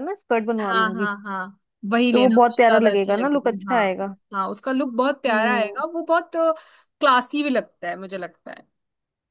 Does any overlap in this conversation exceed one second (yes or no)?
yes